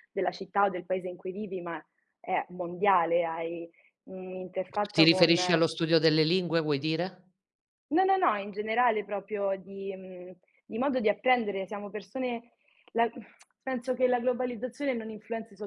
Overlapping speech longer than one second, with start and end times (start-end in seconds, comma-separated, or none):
none